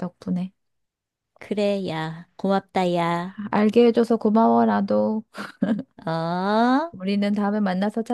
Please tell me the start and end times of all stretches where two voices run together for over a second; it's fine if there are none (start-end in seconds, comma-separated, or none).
none